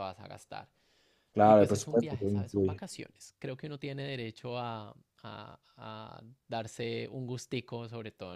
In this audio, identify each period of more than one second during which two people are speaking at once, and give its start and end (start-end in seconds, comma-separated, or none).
1.4-2.8